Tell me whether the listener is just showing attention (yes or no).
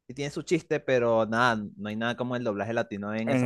no